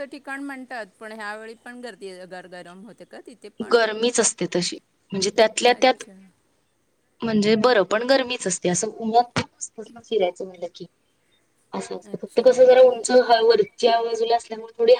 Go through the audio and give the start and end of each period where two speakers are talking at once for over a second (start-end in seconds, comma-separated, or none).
none